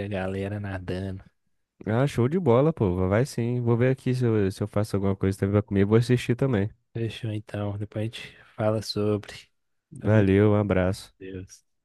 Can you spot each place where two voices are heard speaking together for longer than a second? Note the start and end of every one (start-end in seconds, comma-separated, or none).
none